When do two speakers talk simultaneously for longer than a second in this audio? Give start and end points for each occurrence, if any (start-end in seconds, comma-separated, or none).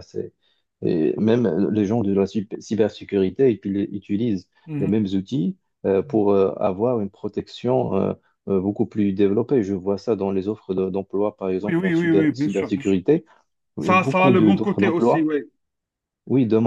11.6-13.0, 13.8-15.3